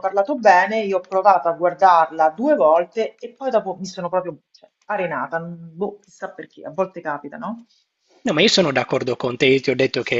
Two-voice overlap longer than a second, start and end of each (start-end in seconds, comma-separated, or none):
none